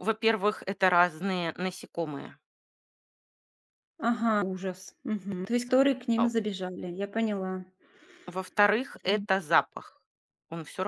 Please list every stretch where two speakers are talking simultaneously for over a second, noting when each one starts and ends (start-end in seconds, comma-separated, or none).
none